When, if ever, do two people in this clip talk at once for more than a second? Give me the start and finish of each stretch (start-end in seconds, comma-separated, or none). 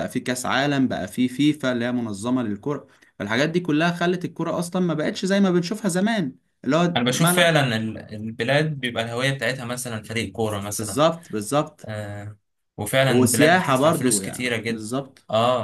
13.0-14.9